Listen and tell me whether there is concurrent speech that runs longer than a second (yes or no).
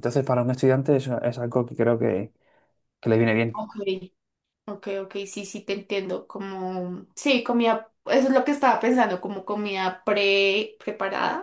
no